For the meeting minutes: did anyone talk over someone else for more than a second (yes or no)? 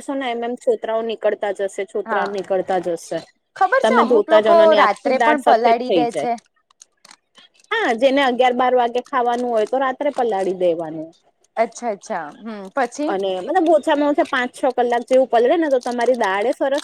yes